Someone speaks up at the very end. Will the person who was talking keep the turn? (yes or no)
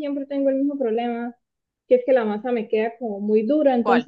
yes